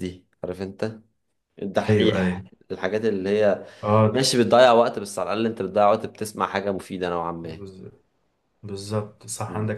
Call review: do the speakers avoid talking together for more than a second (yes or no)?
yes